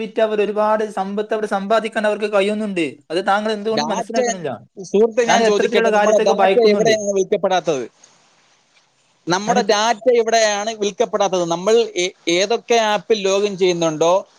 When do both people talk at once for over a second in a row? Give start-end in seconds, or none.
5.5-7.0